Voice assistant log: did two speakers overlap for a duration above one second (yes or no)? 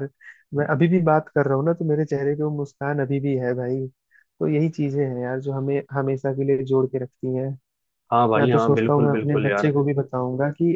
yes